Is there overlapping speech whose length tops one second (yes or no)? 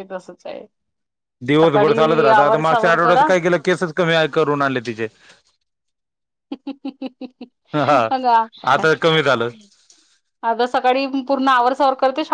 yes